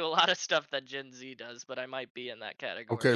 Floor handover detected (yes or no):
yes